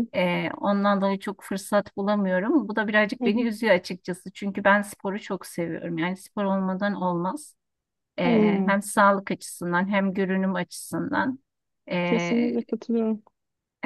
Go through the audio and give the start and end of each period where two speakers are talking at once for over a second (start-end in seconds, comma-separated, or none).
none